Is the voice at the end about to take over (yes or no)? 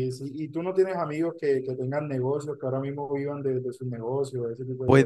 yes